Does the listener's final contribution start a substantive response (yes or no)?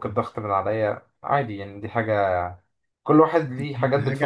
yes